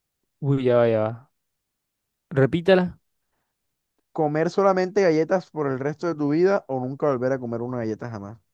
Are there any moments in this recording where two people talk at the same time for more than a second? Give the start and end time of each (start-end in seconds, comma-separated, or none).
none